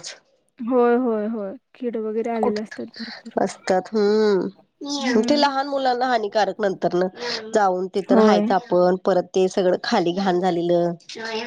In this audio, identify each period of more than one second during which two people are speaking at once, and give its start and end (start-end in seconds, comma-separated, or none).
none